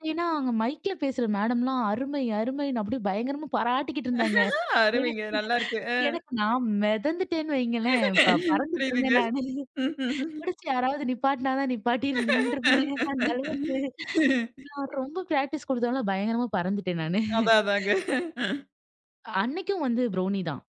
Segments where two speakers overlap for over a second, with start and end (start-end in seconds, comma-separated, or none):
none